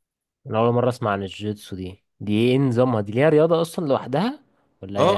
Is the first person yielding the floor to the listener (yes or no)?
yes